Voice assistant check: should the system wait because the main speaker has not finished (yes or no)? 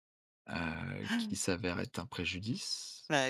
yes